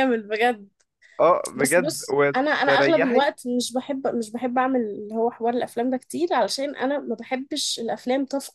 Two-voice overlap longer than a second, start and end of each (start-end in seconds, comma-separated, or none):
1.6-3.3